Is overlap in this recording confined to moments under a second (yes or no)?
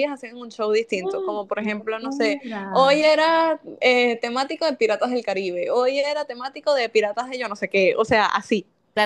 no